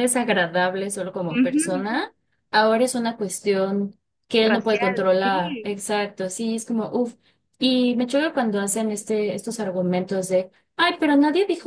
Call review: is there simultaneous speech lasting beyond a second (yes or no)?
yes